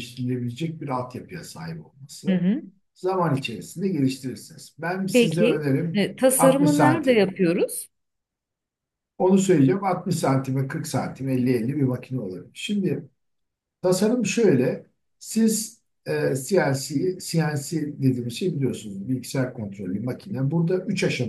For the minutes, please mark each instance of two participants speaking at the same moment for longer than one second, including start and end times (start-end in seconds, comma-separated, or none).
5.1-7.3